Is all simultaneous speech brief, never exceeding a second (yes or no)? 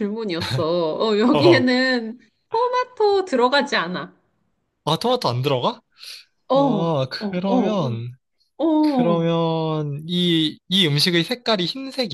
no